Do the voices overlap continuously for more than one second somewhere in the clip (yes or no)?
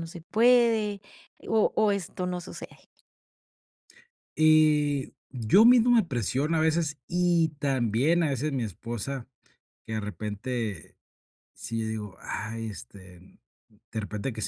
no